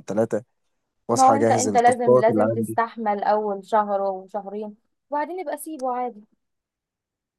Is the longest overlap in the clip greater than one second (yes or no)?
yes